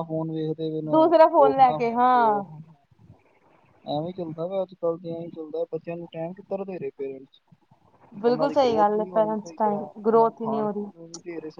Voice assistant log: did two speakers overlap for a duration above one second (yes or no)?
yes